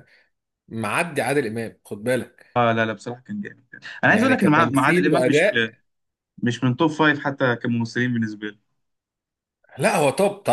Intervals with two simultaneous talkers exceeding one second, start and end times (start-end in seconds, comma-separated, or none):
4.1-5.5